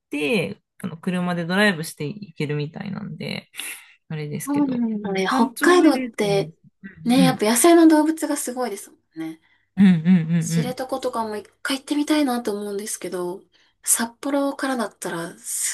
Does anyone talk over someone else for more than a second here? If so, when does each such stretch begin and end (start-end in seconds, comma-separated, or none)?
4.5-6.5